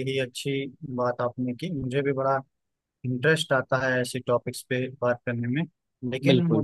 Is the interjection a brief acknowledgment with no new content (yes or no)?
yes